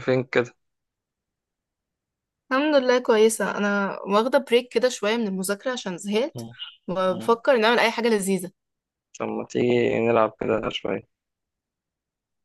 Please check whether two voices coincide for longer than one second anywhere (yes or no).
no